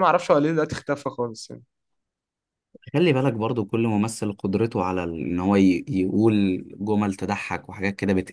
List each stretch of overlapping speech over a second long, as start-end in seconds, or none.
none